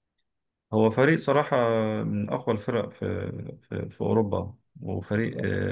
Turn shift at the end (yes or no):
no